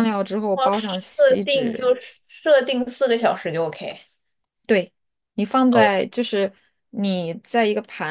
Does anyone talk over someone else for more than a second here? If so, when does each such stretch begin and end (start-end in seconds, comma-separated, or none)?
0.5-1.8